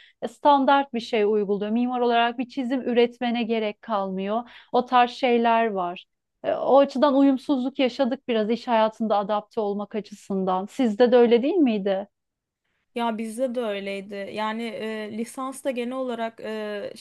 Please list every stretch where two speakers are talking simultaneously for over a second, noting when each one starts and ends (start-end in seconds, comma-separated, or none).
none